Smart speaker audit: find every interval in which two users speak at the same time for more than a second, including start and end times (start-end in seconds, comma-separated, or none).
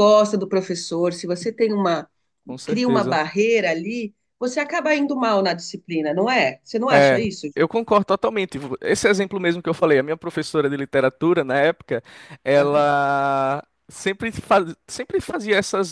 none